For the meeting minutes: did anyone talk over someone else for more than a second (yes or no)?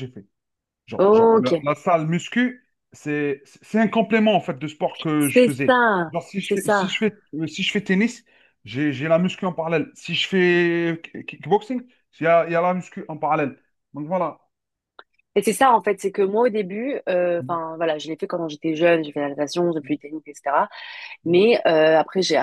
yes